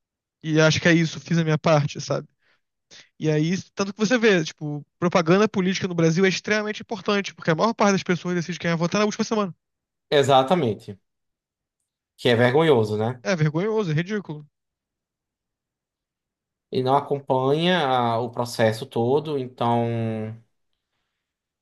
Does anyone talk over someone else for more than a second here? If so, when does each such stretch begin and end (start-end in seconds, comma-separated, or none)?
none